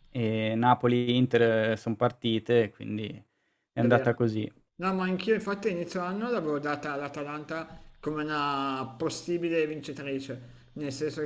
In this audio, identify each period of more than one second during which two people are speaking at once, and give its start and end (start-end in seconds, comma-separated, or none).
none